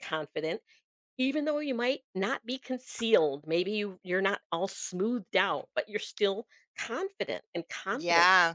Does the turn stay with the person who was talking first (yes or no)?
no